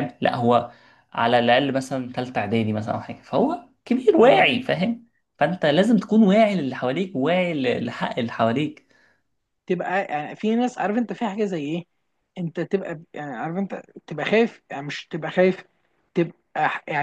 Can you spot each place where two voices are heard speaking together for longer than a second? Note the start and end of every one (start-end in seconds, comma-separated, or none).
none